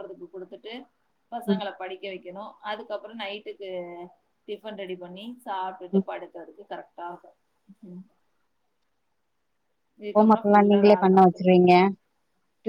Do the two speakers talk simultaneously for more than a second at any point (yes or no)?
yes